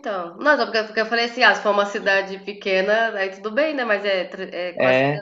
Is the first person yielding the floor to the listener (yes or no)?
no